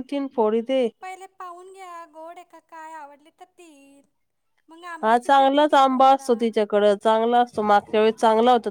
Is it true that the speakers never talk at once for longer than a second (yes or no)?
no